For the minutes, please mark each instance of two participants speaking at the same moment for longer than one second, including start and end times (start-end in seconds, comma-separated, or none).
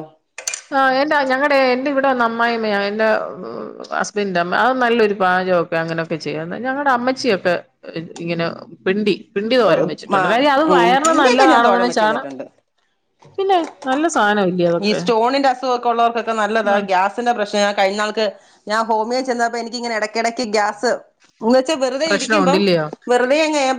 10.8-12.2